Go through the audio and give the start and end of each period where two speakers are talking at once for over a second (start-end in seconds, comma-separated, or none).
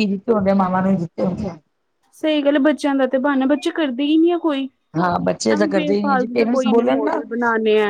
5.5-7.2